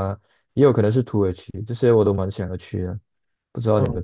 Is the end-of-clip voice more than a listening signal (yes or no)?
yes